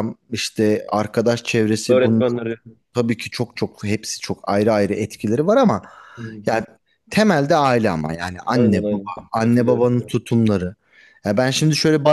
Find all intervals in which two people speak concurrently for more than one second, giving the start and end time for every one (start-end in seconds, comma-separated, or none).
8.5-9.9